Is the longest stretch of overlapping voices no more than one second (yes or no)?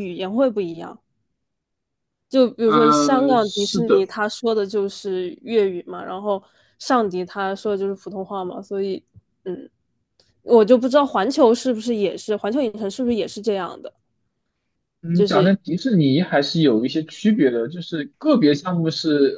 no